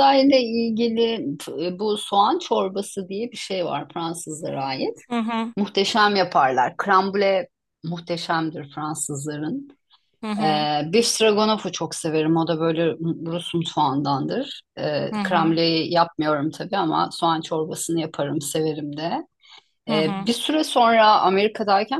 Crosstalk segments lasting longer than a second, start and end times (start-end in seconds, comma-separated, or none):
none